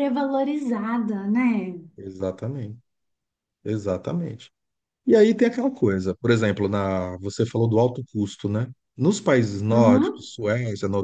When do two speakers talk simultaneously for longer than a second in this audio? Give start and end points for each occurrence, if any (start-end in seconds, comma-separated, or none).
none